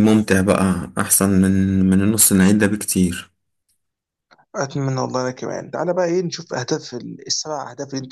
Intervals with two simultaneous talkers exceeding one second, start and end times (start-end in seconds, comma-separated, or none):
none